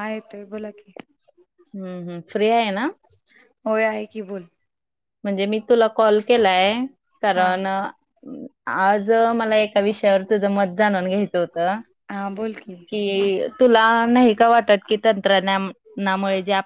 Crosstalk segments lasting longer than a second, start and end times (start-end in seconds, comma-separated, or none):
none